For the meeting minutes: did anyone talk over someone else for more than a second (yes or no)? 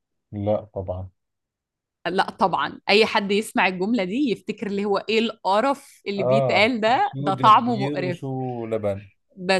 yes